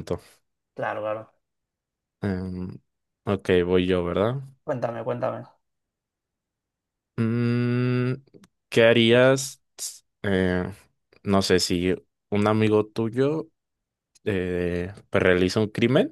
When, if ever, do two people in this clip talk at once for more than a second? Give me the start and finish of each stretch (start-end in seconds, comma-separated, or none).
none